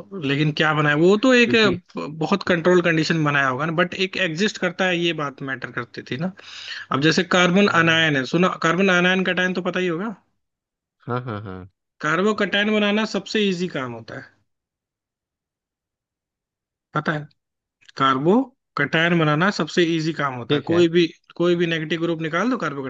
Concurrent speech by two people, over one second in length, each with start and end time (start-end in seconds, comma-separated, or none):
none